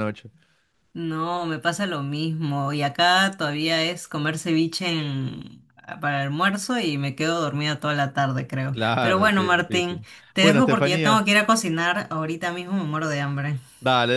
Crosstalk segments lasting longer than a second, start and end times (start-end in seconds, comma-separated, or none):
8.7-11.2